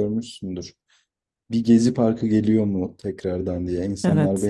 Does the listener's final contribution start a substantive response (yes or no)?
no